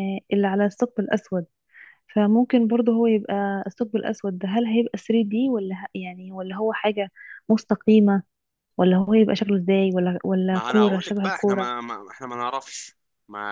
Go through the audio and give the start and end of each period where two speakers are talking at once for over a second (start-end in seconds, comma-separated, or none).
10.5-11.7